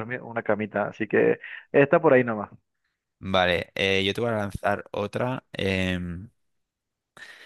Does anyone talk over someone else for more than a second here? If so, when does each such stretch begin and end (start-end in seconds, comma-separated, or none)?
none